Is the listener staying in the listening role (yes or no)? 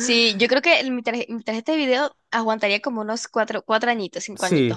no